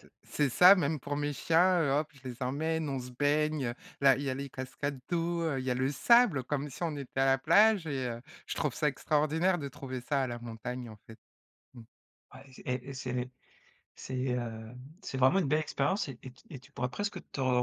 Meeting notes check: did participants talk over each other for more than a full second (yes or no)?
no